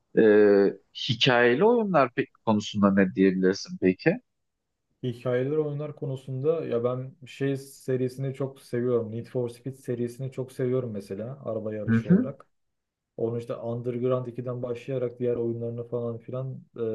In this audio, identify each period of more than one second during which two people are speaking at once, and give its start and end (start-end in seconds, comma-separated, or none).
none